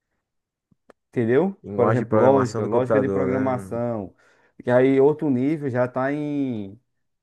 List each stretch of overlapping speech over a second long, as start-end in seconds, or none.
1.6-3.8